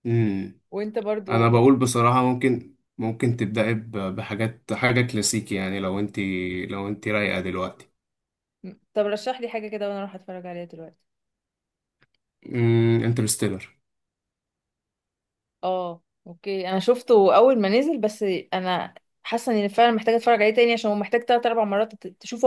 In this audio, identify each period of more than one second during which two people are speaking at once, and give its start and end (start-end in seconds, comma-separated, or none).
none